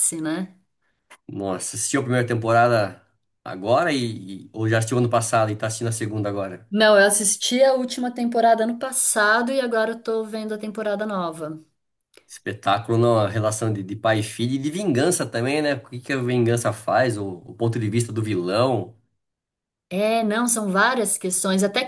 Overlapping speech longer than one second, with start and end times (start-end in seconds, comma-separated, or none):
none